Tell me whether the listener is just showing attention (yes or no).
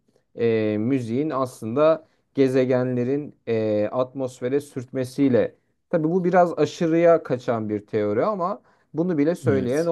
yes